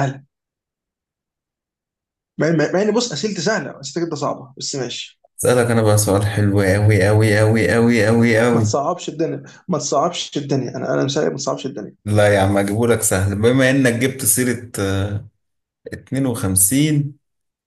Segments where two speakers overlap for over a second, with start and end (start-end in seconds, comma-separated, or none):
none